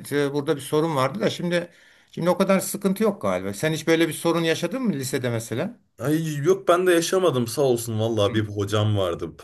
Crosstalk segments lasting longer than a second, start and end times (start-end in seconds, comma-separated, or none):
none